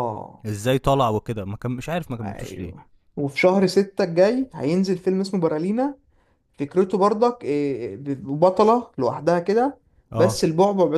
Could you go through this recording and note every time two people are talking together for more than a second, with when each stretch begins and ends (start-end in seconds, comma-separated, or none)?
none